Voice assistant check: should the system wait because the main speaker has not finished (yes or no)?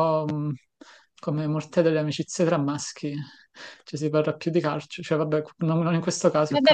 no